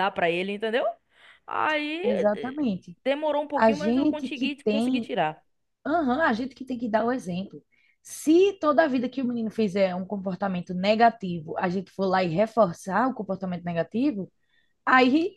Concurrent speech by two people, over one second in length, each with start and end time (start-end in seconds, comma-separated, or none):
3.5-5.1